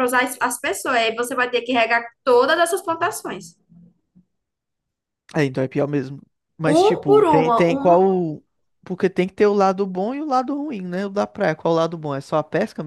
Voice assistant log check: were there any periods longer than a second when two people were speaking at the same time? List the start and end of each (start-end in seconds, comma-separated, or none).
6.7-8.1